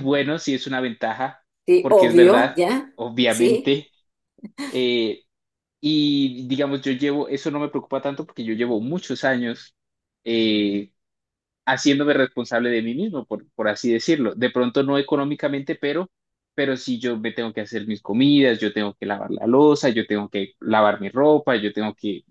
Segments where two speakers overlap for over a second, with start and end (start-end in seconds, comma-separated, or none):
1.8-3.8